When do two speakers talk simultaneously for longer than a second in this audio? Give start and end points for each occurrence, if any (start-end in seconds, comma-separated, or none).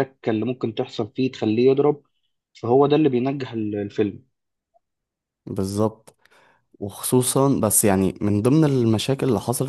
none